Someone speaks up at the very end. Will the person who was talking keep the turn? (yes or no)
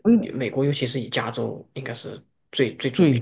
no